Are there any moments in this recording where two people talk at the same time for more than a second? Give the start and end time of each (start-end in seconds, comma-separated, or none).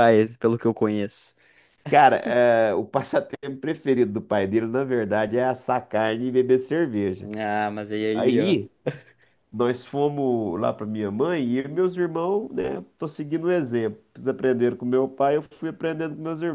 none